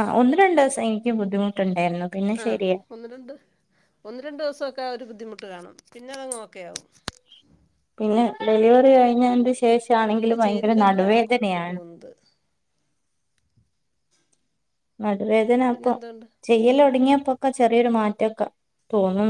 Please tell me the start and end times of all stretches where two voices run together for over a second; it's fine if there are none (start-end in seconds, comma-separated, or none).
10.1-11.8